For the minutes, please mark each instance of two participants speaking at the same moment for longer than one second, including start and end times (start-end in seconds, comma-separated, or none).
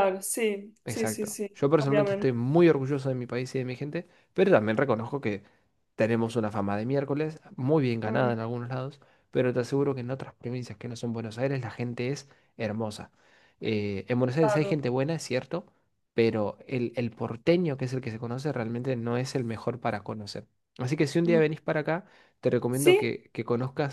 0.8-2.3